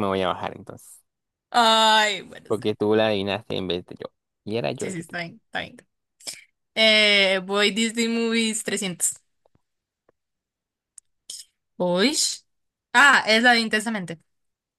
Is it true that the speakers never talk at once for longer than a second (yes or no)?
yes